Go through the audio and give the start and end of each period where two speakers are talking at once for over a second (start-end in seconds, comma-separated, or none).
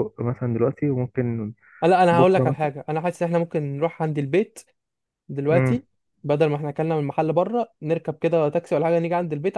none